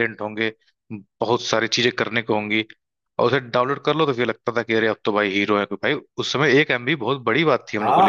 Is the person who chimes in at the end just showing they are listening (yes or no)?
no